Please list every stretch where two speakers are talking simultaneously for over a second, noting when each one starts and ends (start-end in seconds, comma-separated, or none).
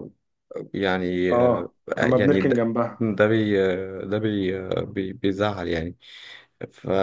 1.3-3.0